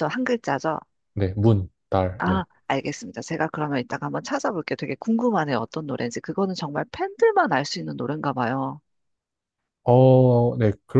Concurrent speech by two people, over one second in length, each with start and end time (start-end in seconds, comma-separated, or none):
none